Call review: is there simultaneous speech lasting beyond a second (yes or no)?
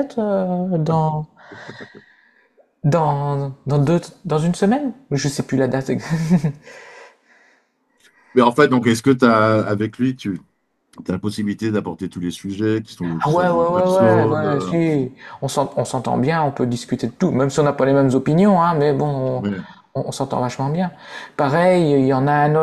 yes